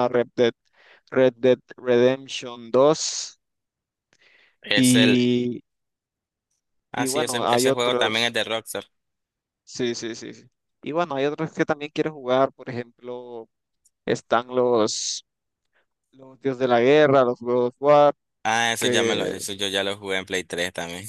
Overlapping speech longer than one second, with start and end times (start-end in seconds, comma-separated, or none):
7.0-8.3